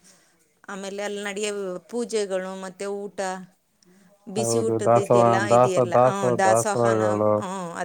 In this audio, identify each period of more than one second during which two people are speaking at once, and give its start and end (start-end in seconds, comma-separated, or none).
4.4-7.3